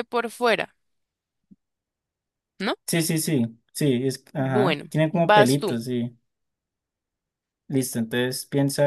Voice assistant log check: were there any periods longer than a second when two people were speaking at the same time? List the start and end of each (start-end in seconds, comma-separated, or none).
4.4-5.7